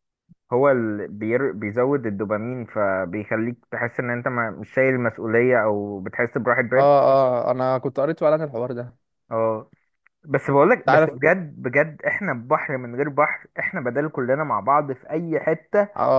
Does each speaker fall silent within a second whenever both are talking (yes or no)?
yes